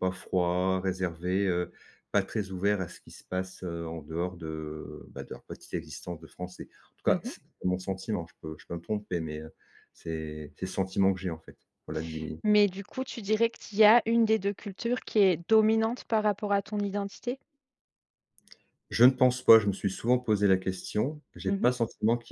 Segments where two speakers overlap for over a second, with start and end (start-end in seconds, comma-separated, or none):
none